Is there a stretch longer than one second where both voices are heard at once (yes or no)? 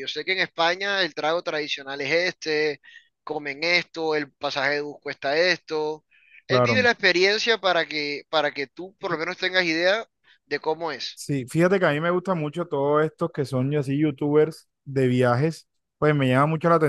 no